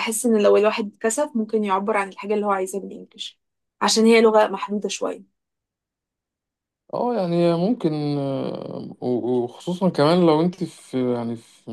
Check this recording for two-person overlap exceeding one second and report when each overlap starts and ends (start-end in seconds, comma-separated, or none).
none